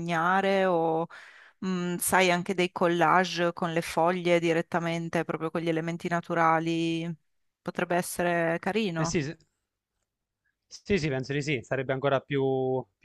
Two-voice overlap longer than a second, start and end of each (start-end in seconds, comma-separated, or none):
none